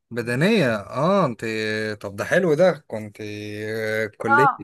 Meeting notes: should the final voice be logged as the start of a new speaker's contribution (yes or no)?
yes